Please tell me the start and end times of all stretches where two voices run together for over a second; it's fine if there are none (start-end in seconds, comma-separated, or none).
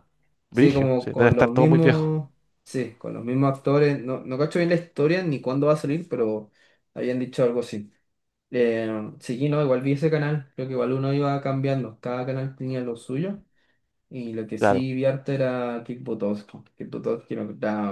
0.5-2.1